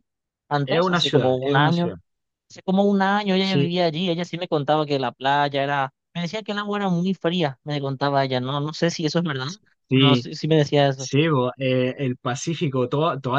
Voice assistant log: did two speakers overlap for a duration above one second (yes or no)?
yes